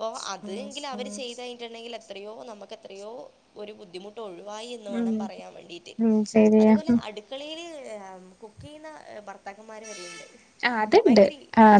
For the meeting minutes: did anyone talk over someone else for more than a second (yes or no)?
no